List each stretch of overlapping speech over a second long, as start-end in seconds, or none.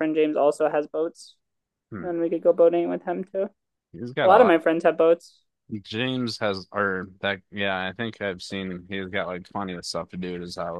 none